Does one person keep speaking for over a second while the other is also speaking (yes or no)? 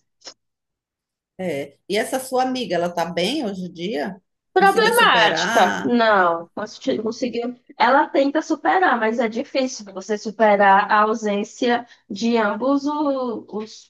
yes